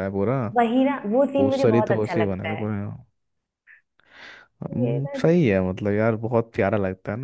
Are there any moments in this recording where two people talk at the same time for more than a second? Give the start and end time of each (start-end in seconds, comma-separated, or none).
1.4-2.7